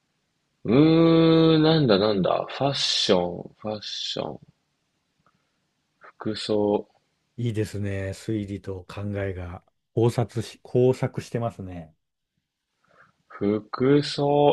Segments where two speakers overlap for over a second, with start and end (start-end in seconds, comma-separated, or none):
none